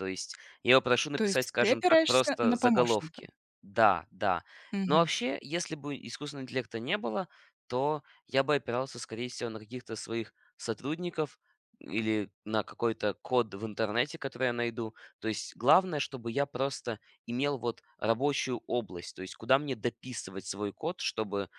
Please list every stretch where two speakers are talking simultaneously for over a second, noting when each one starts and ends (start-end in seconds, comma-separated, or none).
1.1-3.2